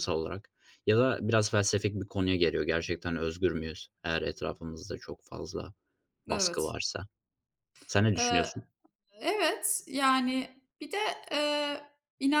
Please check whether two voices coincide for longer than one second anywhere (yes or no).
no